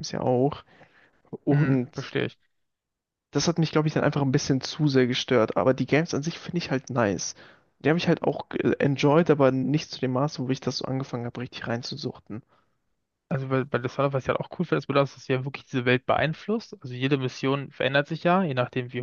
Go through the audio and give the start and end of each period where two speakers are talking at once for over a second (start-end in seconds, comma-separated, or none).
none